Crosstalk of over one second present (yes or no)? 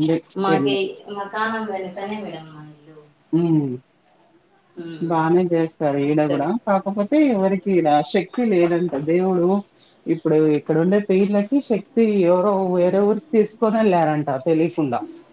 no